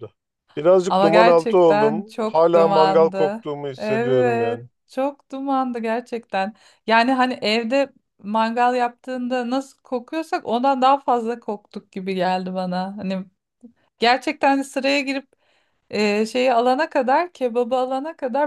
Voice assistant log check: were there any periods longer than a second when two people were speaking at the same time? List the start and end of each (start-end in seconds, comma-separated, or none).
0.9-4.6